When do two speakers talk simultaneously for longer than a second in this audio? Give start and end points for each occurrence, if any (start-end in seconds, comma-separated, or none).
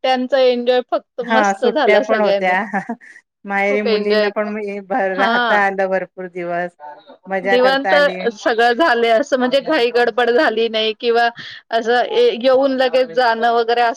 1.3-2.5